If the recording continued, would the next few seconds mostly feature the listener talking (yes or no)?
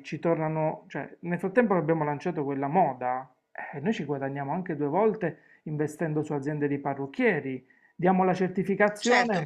yes